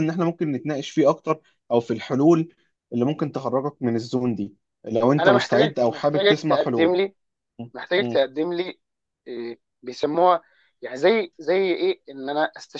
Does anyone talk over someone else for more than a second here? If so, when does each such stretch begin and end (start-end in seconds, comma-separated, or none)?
5.2-6.9